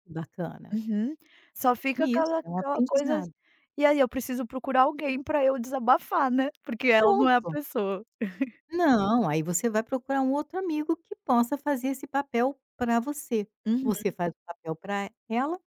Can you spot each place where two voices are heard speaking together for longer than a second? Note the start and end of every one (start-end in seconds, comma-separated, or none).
2.0-3.2